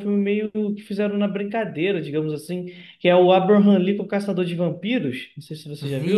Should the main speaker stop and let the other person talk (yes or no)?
yes